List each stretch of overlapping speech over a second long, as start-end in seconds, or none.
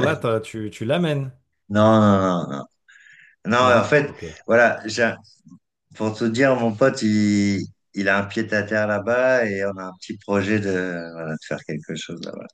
none